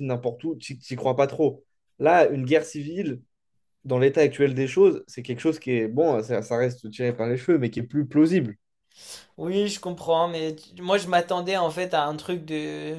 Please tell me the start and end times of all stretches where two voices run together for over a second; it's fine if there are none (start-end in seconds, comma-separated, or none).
none